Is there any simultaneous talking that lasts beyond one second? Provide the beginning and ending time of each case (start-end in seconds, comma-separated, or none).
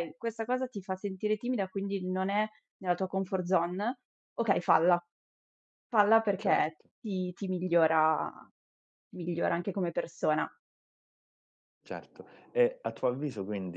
none